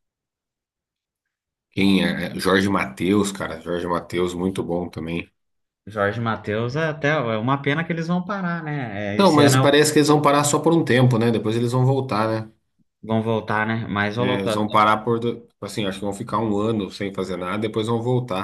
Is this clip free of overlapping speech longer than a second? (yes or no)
yes